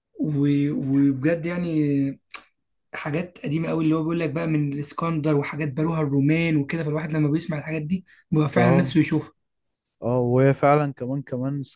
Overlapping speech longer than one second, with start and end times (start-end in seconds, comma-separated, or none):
none